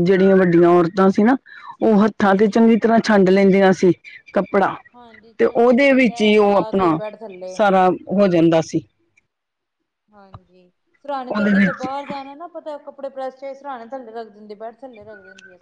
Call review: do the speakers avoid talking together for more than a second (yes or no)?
no